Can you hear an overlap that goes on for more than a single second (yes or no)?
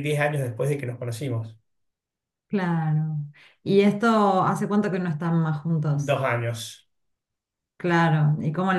no